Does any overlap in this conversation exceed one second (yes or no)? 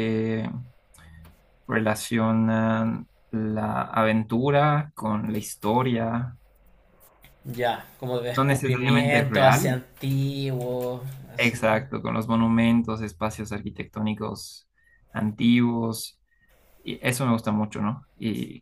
yes